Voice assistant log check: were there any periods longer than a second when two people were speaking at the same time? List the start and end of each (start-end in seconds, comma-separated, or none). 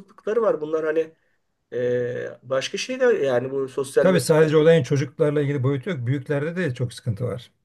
none